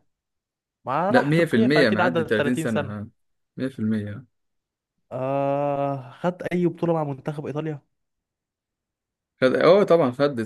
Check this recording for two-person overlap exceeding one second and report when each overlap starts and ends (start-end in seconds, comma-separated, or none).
1.1-3.0